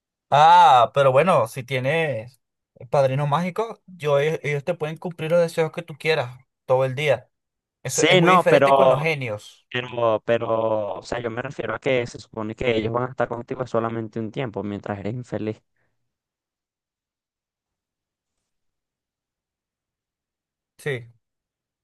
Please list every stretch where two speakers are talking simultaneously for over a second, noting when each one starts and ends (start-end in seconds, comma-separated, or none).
7.8-9.1